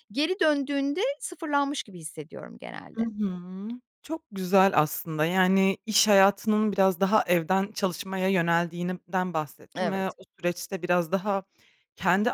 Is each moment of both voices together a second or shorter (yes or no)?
yes